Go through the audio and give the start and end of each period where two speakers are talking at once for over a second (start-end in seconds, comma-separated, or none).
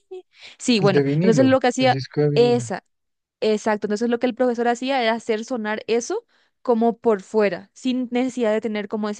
0.8-2.6